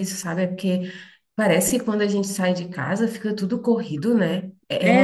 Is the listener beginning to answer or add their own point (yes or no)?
yes